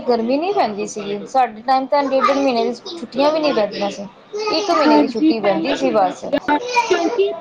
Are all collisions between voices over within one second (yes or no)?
no